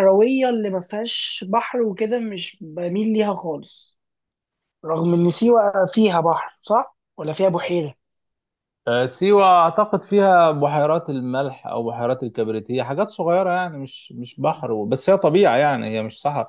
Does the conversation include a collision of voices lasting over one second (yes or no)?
no